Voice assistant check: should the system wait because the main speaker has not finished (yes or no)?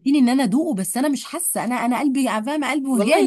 no